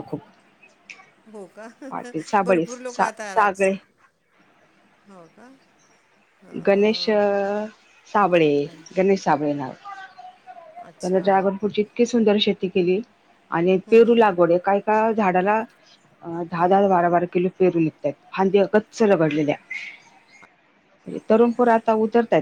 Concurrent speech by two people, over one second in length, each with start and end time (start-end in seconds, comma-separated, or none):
1.9-3.7